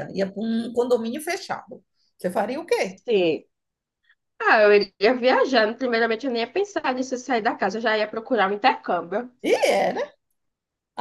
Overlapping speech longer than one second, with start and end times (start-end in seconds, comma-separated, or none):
none